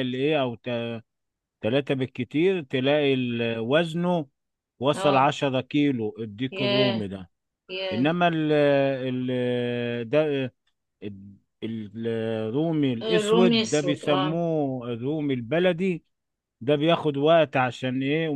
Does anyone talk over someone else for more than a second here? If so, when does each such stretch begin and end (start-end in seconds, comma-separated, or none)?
13.0-14.3